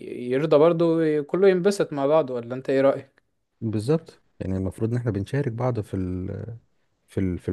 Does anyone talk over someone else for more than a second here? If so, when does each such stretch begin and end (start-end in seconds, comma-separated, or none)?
none